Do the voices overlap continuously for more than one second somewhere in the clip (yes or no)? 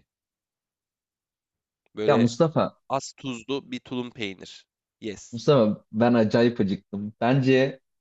no